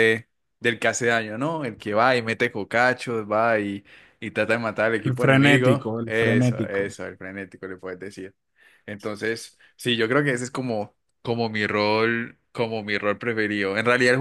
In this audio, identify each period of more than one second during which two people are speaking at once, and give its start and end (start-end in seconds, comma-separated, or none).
5.0-6.9